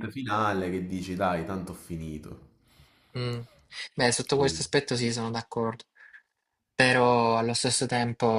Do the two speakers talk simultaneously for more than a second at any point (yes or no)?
no